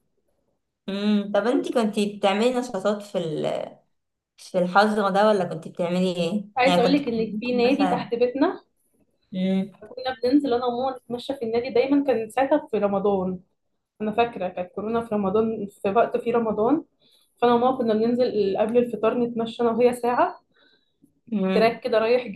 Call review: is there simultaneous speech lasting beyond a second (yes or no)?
yes